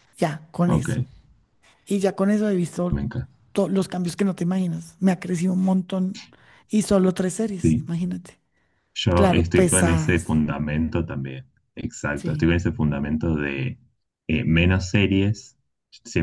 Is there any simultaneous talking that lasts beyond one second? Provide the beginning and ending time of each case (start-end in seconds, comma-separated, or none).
9.1-10.4